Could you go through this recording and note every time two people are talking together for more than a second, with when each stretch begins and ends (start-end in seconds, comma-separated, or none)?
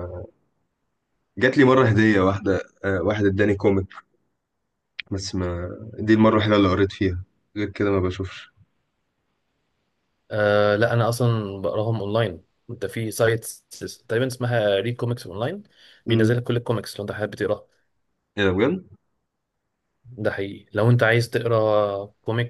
none